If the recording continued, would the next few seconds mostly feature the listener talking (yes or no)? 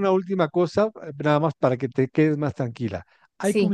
no